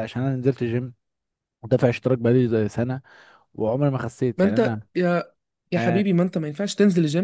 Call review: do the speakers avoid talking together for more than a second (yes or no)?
yes